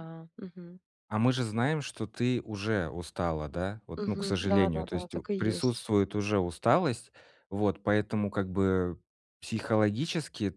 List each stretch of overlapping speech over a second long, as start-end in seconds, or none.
4.0-5.8